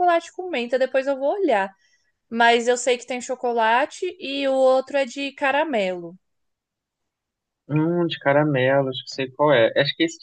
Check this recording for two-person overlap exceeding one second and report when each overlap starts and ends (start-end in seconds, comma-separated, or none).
none